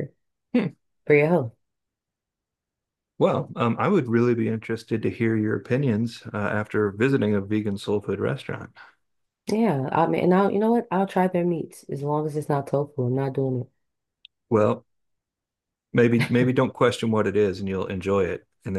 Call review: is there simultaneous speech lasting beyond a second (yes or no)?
no